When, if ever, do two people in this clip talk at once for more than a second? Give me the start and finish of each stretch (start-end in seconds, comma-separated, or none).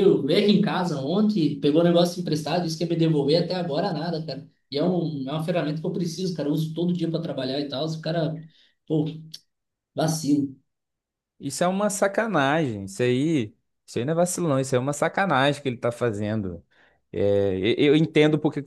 none